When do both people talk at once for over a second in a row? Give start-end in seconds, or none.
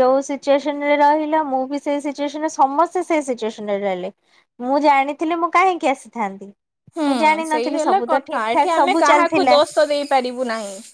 7.5-9.6